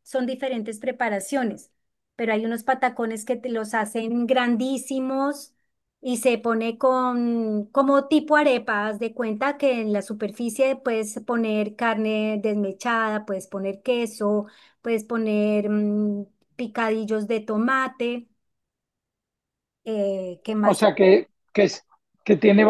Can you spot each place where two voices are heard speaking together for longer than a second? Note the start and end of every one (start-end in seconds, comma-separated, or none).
none